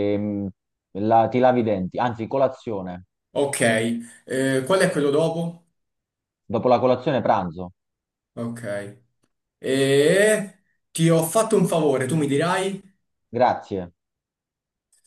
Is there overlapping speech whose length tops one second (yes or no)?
no